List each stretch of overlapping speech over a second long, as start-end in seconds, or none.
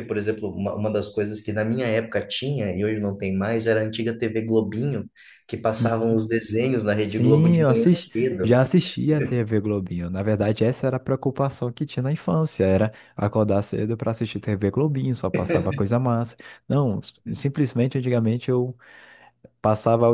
7.0-8.6